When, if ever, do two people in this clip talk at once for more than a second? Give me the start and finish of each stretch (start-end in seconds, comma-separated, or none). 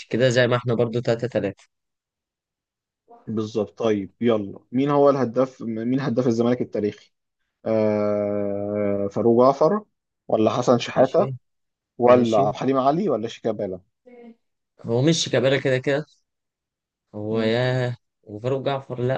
none